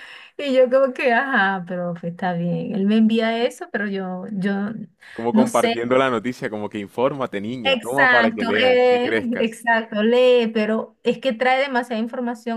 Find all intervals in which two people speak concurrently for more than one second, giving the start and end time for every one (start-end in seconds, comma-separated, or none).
7.7-9.6